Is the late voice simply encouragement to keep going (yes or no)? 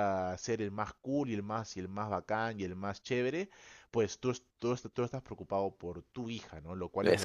yes